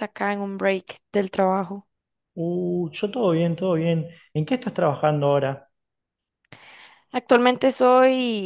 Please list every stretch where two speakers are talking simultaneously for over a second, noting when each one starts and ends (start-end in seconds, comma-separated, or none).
none